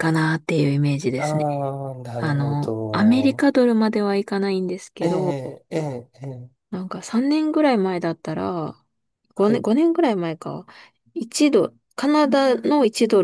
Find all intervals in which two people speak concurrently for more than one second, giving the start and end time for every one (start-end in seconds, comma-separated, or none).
2.2-3.5